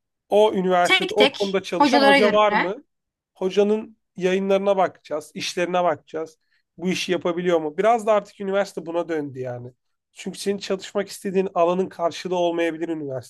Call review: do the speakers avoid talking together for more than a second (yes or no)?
no